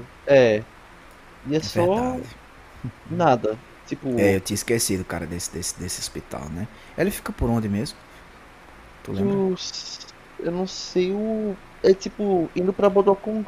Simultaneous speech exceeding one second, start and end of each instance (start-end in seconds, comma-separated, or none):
none